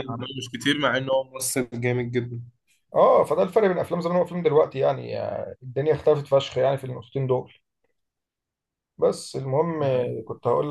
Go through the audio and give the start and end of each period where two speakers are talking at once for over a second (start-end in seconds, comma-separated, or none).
none